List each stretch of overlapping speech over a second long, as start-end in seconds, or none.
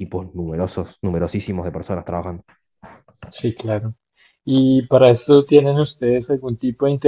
none